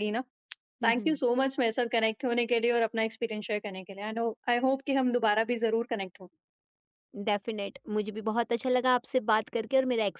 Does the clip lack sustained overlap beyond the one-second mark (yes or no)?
yes